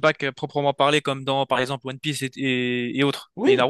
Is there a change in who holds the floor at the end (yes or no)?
yes